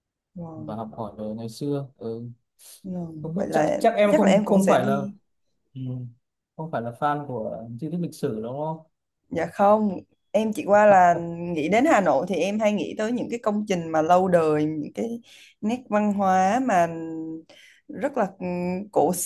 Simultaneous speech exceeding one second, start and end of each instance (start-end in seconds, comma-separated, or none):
3.2-5.0